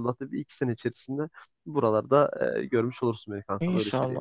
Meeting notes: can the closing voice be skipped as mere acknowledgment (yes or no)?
no